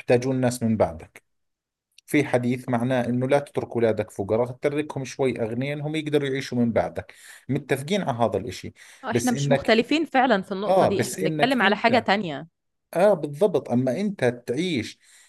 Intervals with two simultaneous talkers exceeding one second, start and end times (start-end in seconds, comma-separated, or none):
10.7-12.1